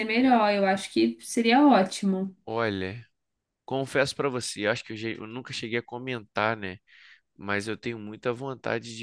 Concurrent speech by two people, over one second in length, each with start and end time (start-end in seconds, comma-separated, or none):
none